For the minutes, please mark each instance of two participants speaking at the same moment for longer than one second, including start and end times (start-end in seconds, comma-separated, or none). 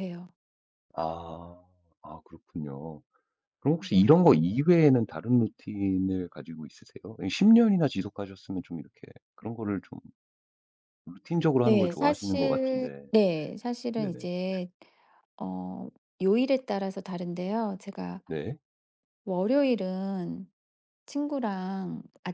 11.6-13.0